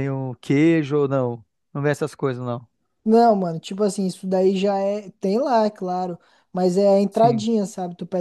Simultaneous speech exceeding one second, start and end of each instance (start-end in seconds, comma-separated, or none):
none